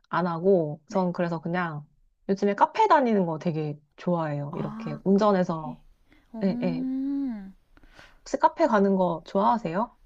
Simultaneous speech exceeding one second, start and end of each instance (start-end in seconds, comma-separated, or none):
4.5-5.8